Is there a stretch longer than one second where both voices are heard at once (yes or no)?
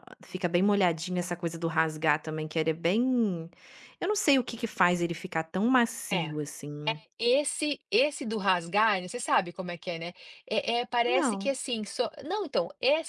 no